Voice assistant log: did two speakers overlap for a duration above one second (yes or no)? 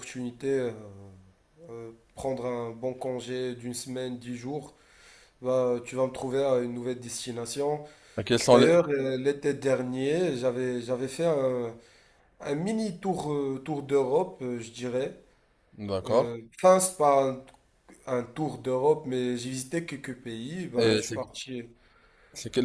no